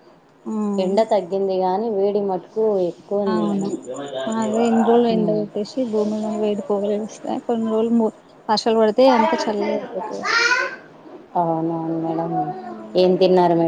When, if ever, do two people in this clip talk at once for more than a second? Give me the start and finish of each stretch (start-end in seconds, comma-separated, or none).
none